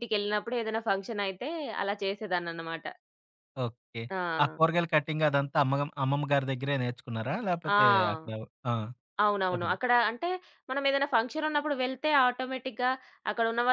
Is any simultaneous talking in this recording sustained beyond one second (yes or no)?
no